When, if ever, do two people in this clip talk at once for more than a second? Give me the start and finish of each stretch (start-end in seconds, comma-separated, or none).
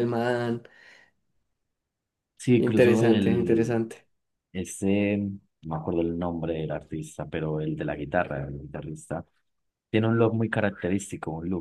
2.6-3.8